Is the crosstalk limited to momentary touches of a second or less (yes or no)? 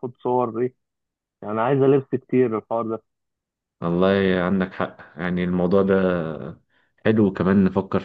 yes